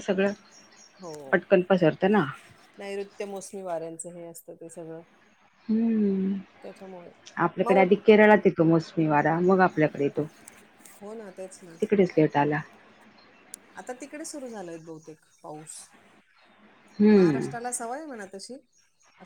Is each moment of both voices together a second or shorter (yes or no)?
yes